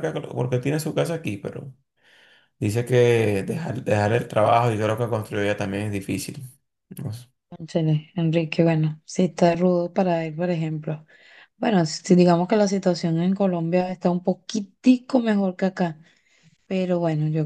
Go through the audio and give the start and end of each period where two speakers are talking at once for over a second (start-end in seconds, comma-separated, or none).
none